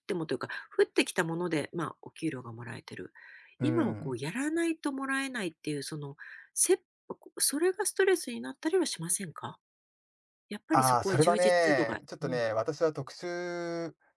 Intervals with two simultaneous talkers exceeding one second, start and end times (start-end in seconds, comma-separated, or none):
10.7-12.5